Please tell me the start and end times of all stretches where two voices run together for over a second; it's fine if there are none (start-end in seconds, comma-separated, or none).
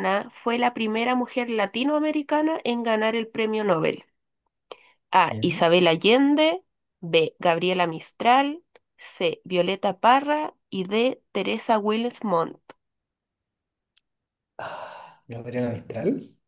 none